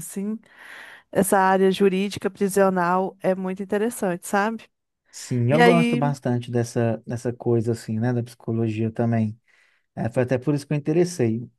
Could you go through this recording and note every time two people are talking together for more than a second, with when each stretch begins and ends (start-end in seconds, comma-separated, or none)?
none